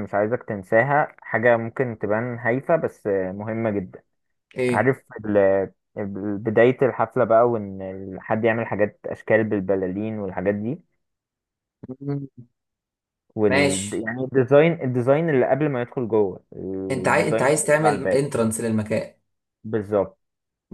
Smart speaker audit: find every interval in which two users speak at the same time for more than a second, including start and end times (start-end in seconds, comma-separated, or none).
16.9-18.3